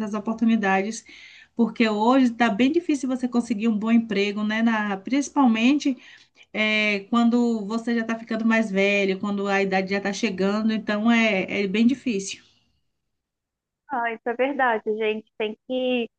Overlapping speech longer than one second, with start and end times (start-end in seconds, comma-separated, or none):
none